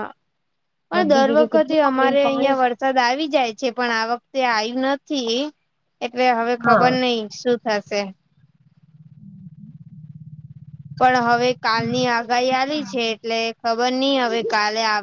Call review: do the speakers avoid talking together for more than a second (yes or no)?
no